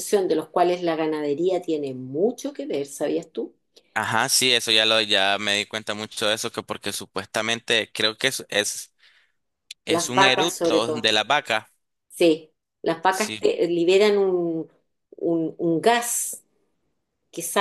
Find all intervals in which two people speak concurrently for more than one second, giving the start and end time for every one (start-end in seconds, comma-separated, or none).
9.9-11.1